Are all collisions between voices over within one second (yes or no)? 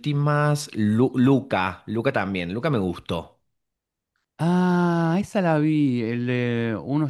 yes